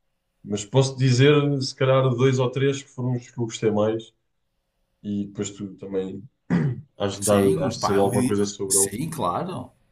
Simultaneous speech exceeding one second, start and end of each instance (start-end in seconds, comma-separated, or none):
7.2-9.0